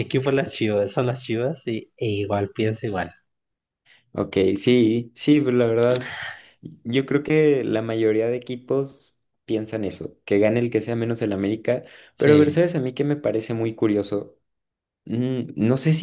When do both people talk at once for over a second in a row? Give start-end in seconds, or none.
none